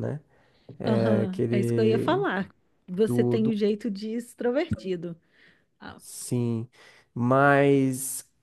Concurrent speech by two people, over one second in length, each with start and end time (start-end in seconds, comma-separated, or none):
0.8-2.2